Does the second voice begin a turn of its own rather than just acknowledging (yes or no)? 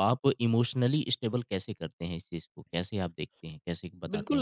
yes